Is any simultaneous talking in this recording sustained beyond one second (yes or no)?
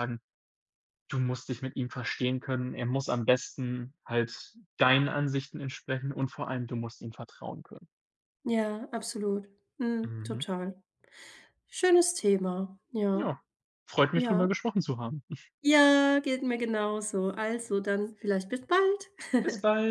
no